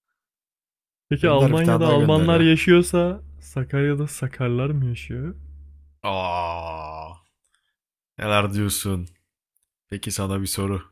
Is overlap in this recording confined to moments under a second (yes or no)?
no